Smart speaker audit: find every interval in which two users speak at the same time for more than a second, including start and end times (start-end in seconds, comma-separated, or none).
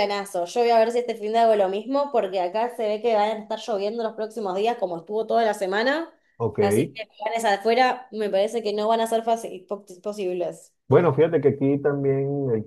none